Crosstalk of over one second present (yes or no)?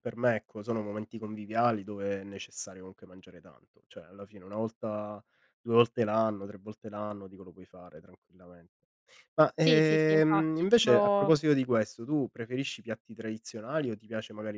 yes